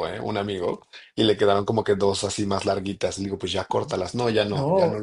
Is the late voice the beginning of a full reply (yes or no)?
yes